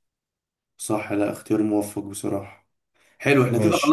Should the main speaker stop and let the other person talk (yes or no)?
no